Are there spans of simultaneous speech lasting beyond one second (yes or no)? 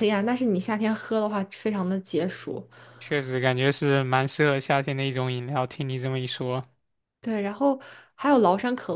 no